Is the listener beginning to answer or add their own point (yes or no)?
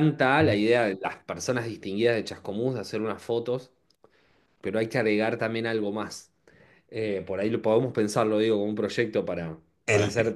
no